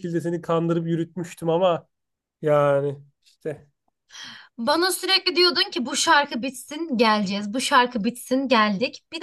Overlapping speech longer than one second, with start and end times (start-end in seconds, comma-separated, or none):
none